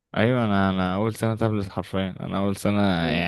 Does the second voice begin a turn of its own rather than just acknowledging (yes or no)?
no